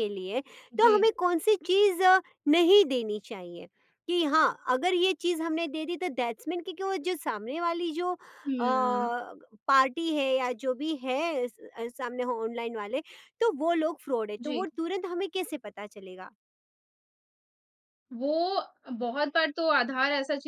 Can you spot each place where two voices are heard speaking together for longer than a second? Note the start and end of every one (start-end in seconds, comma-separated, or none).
none